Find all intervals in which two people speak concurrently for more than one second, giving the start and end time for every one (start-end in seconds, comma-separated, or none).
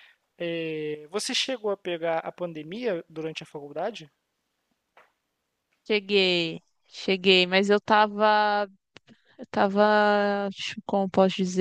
none